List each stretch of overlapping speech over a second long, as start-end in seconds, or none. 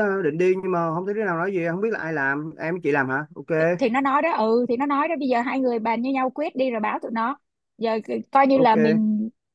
none